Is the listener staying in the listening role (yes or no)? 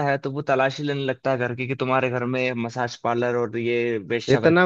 no